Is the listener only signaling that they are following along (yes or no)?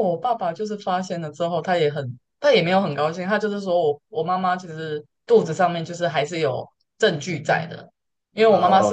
no